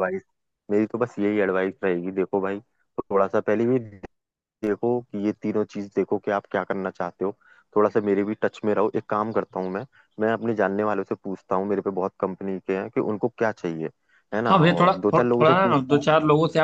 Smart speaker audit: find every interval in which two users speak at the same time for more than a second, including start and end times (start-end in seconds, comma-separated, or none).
14.5-16.1